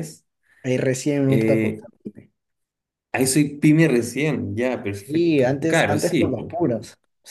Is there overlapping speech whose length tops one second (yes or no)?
yes